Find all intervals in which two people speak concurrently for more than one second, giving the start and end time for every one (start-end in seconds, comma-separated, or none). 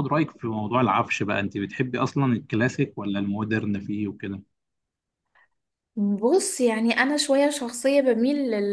none